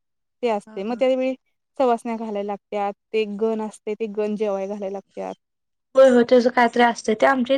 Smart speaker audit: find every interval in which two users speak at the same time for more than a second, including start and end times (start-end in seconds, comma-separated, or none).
none